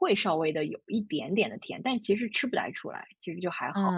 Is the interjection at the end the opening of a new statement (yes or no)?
yes